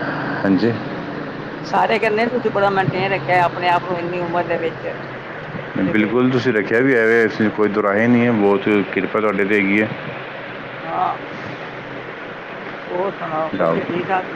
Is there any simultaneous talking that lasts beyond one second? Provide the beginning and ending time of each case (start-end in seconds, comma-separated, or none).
none